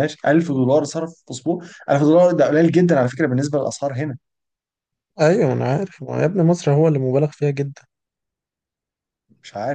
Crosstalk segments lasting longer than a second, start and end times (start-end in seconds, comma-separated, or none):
none